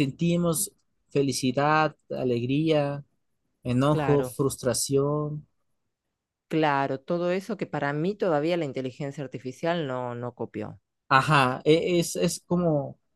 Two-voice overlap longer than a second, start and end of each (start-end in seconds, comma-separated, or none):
none